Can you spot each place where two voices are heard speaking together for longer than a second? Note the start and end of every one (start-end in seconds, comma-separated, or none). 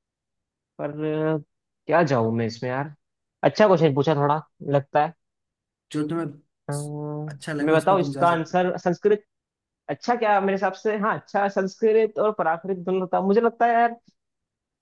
7.3-8.6